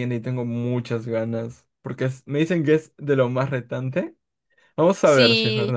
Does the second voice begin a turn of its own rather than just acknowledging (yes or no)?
yes